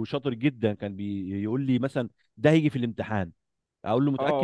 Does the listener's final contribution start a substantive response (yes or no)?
no